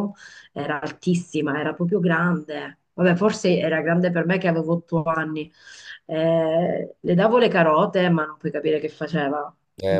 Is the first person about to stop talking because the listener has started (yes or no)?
yes